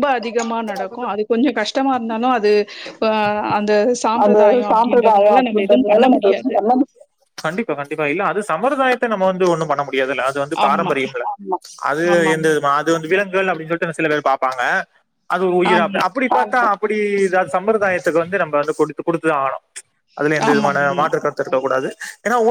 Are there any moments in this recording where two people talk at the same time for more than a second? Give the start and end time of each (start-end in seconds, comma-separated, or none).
4.2-6.0